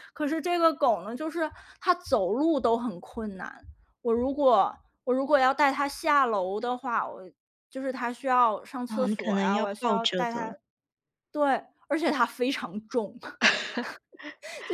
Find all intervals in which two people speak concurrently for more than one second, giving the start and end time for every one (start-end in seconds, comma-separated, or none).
8.9-10.5